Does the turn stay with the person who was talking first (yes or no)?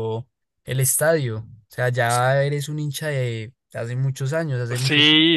no